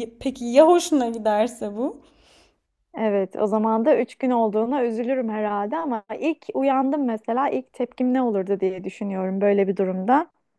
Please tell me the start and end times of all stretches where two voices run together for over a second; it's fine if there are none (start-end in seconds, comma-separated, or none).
none